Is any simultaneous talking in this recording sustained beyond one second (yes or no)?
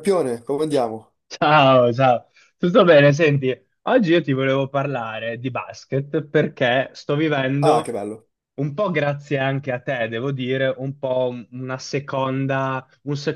no